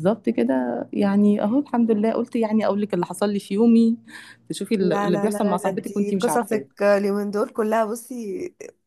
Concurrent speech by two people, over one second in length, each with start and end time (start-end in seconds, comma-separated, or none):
4.8-6.6